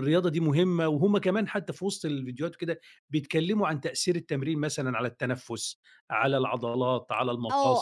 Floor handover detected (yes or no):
yes